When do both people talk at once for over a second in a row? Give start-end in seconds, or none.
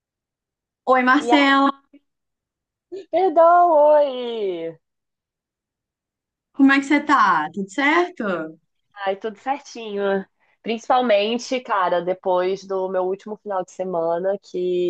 none